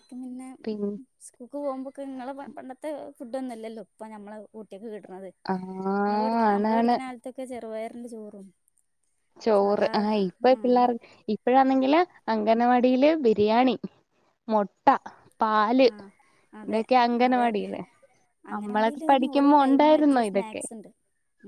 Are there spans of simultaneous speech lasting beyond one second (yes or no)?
yes